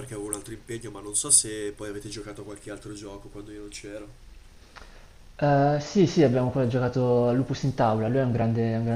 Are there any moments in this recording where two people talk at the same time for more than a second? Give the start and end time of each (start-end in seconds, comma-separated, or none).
none